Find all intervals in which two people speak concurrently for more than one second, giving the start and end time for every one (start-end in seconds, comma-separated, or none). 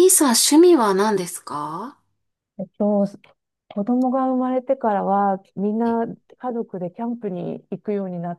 none